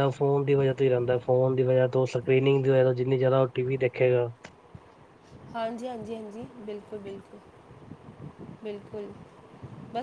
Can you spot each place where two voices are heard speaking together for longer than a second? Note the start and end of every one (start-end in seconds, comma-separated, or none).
none